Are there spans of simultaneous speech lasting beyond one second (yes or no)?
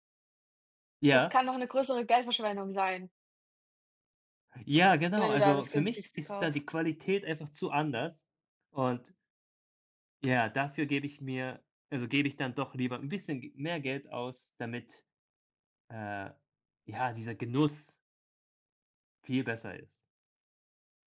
yes